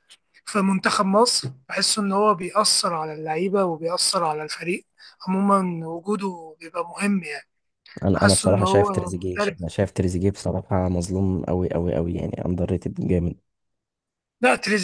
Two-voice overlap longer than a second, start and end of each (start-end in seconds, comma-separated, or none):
8.1-9.6